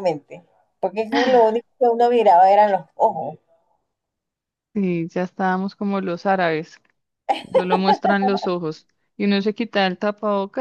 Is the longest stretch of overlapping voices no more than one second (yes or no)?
yes